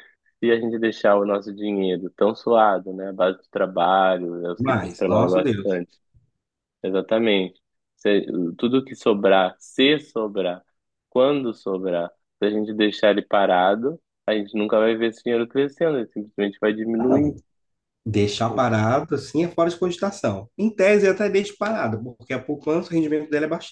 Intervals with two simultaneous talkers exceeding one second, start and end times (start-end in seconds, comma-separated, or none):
4.6-5.8